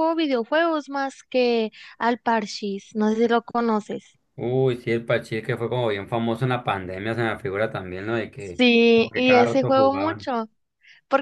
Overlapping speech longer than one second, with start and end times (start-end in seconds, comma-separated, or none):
8.4-10.3